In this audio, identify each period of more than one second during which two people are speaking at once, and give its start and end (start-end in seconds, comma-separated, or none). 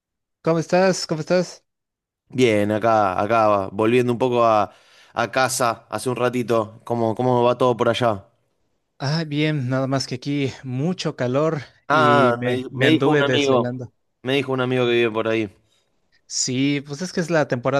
11.9-13.8